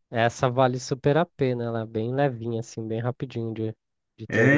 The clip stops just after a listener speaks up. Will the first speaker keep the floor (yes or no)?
no